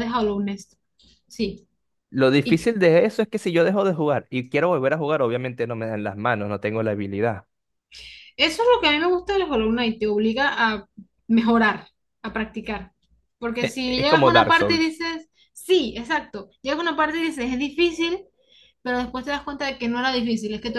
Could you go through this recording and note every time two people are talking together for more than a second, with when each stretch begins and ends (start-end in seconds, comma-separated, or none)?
13.6-15.0